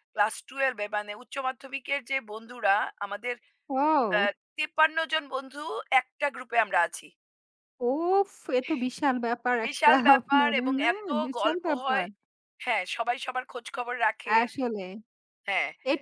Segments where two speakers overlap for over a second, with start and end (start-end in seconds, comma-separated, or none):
9.6-12.1